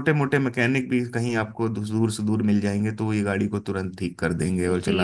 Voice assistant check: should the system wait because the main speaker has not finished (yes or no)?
no